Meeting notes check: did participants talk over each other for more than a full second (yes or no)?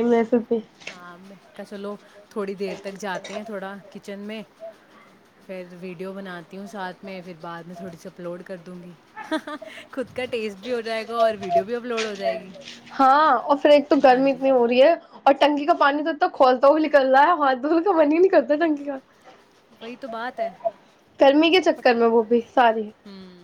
no